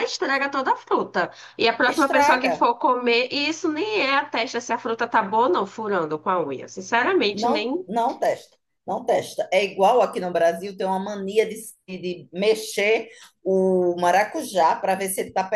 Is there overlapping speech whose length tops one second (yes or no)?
no